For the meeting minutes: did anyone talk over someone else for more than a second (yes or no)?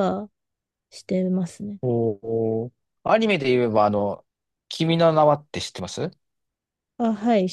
no